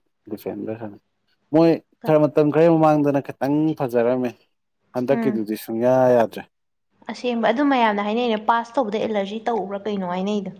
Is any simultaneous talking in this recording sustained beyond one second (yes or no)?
no